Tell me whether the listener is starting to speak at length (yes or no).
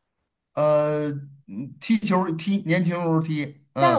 yes